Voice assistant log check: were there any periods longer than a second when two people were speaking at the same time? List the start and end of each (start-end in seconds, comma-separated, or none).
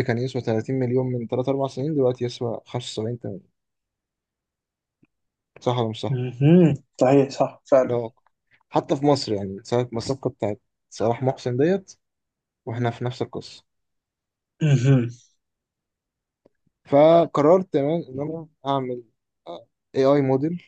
none